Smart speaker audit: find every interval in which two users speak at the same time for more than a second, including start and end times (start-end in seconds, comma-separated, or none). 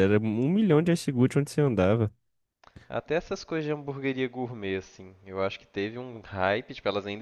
none